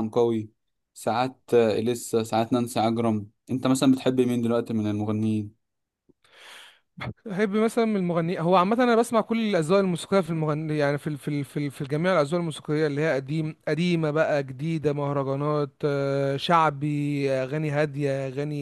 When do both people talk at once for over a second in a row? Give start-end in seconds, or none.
none